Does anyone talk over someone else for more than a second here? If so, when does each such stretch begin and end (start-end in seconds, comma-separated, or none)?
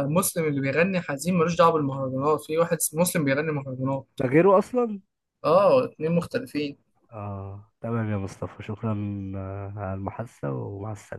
none